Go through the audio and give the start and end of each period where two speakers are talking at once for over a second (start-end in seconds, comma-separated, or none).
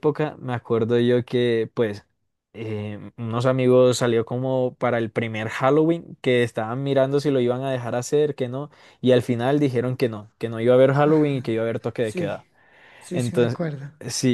11.0-12.5